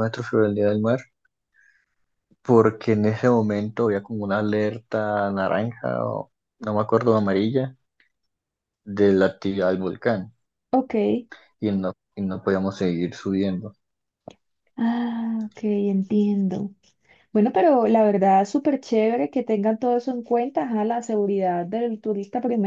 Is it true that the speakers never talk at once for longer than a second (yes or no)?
yes